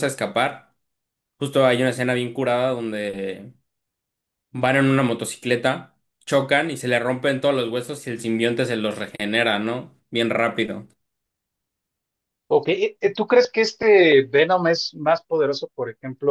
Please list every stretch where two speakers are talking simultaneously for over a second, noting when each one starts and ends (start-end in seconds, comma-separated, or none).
none